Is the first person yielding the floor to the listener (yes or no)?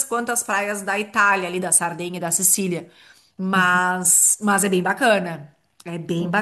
no